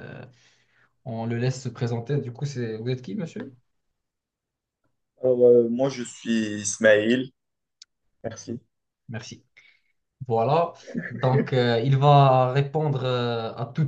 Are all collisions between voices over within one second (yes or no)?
yes